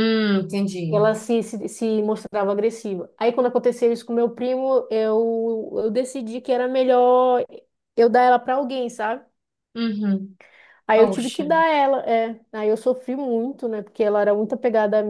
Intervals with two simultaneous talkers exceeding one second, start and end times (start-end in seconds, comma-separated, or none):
none